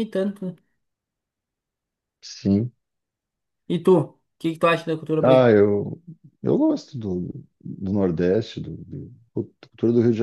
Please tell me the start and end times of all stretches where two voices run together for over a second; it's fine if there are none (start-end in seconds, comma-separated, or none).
none